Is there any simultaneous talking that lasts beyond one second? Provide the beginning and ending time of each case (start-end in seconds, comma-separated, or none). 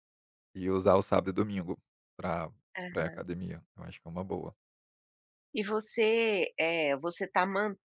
none